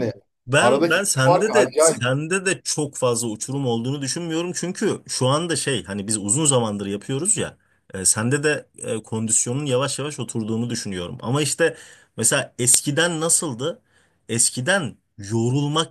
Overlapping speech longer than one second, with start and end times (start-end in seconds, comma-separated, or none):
0.6-2.0